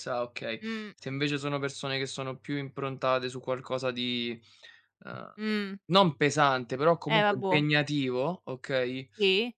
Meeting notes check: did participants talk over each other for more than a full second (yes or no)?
no